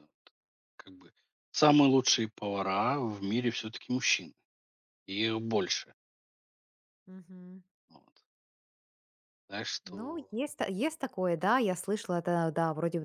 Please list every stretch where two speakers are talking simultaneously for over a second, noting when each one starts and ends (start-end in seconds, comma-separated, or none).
none